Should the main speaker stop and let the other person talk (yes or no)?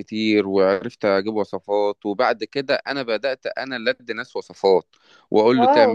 no